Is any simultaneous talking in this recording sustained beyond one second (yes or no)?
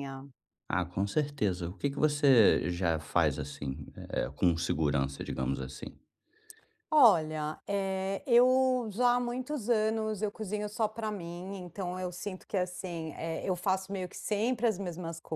no